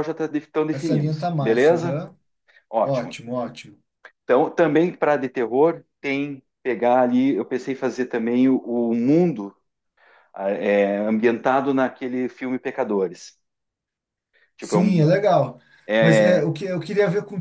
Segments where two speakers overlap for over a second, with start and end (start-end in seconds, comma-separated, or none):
0.7-2.0